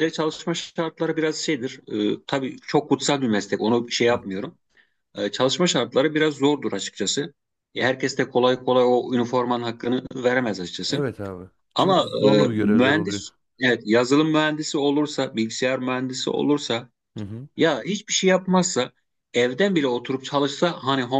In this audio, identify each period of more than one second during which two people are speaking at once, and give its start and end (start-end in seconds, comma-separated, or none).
11.8-13.2